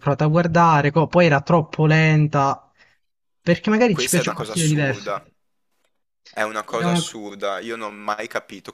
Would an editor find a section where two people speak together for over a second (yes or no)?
yes